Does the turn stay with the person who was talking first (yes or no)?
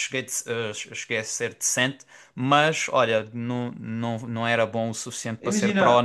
no